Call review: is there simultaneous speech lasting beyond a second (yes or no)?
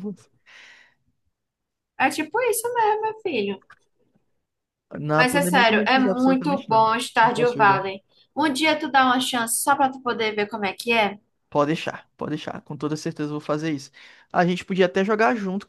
yes